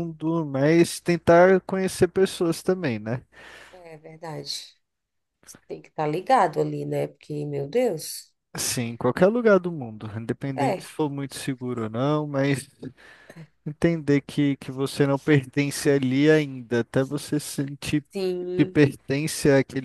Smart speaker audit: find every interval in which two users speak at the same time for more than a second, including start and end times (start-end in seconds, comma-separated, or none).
none